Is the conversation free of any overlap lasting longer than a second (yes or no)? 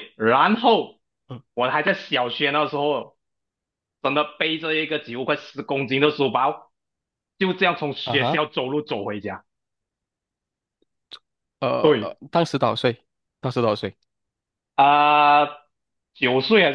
yes